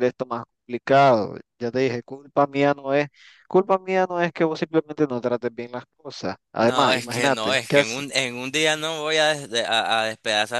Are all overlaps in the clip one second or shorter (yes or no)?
no